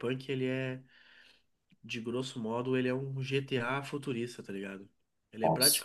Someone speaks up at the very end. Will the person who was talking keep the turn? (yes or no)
yes